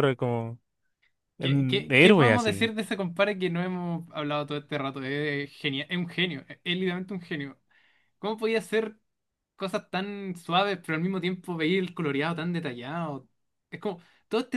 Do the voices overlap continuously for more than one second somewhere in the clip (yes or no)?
yes